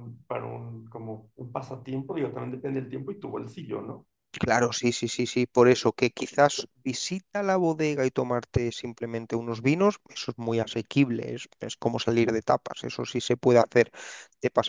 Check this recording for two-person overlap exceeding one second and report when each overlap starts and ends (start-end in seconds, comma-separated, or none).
none